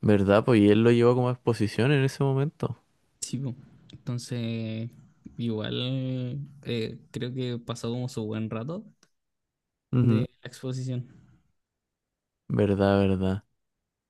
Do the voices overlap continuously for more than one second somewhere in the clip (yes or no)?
no